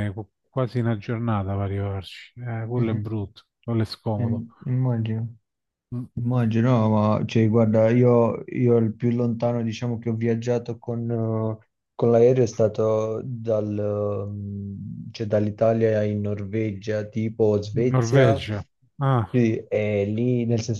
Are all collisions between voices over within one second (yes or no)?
yes